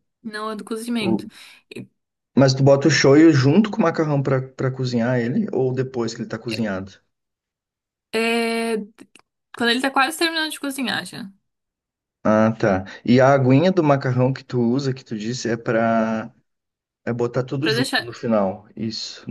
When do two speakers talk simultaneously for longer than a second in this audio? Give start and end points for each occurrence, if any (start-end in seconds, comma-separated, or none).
none